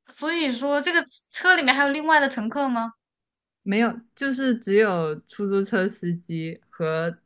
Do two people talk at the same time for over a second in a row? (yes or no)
no